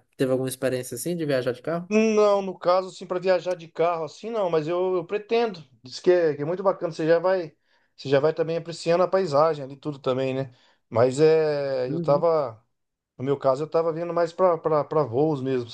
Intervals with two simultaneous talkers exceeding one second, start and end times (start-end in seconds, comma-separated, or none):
none